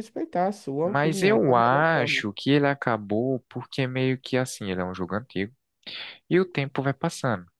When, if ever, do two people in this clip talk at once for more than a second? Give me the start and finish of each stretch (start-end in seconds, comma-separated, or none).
0.8-2.2